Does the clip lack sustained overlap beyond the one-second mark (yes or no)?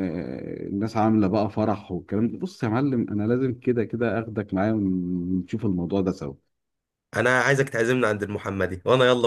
yes